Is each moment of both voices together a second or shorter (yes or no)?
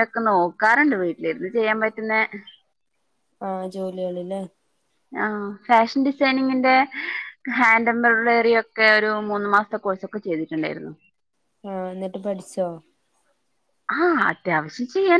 yes